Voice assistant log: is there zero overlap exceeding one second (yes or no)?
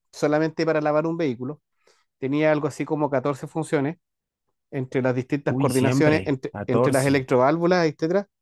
no